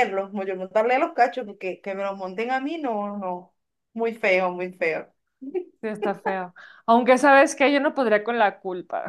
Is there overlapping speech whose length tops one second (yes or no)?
no